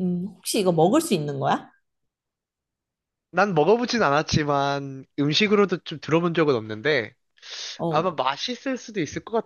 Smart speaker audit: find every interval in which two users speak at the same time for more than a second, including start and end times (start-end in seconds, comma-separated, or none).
none